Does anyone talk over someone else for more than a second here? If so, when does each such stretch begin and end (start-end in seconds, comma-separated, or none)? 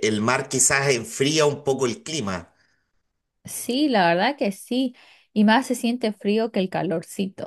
none